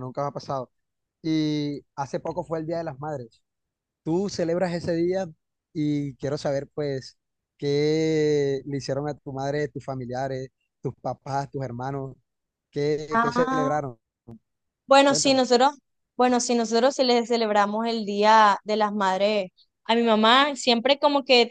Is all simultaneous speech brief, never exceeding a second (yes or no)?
yes